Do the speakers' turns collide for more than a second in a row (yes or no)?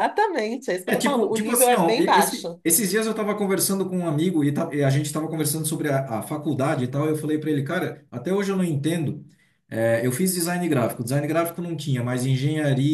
yes